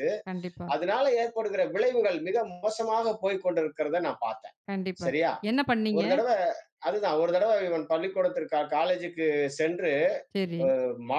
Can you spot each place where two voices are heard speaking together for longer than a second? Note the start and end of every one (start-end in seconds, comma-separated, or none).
none